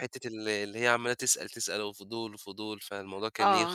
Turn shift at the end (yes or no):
yes